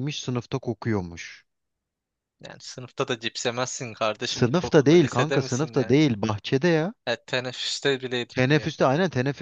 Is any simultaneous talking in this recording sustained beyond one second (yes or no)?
yes